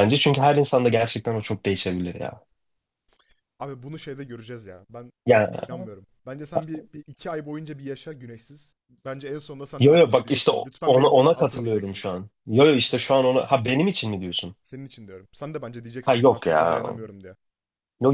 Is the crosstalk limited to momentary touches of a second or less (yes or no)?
no